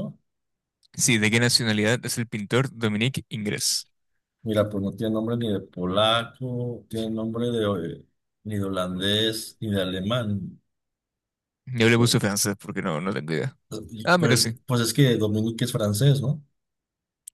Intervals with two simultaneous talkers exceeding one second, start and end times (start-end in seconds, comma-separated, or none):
none